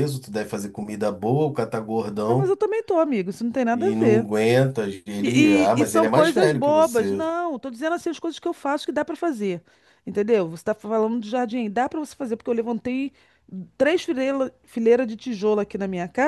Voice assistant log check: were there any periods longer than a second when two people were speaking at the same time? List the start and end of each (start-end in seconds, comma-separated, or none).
5.2-7.2